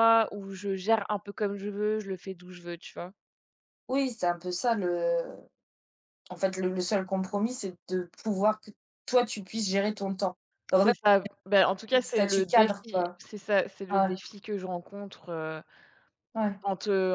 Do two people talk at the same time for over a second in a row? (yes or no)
yes